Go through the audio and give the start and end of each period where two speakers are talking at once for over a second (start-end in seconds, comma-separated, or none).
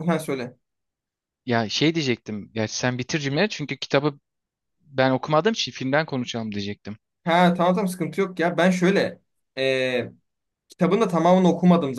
none